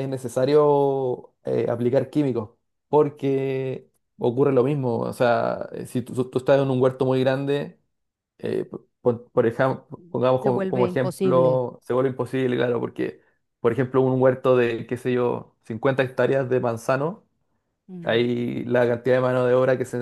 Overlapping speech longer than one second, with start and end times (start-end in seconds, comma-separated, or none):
10.4-11.6